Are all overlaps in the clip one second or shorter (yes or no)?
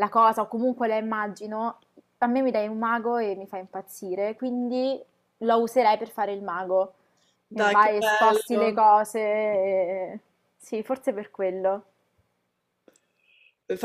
no